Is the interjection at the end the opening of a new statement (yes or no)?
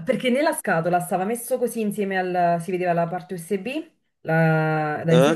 no